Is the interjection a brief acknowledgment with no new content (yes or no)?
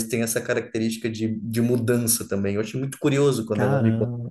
no